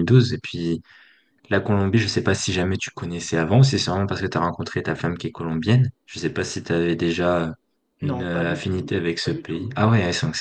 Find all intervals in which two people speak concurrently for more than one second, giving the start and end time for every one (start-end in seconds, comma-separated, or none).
8.0-9.8